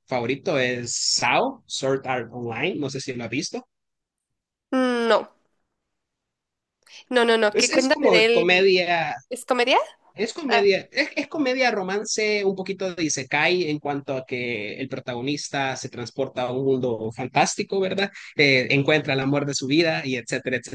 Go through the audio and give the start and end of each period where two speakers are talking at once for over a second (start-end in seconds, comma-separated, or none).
7.5-8.8